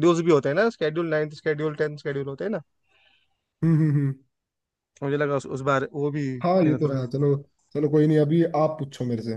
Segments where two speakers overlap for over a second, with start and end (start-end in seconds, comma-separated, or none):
none